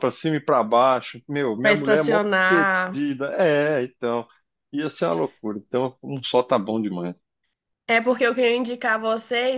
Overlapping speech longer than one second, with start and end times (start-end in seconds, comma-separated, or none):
1.6-3.1